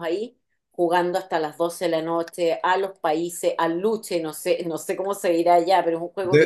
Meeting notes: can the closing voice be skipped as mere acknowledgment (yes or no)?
no